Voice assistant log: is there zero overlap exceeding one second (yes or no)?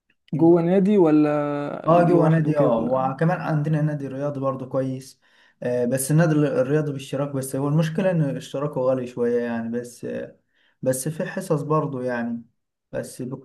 no